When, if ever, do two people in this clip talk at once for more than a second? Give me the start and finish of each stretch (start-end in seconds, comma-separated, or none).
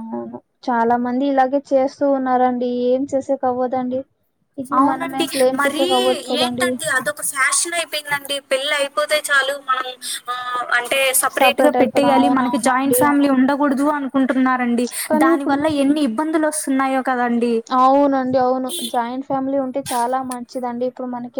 11.8-13.3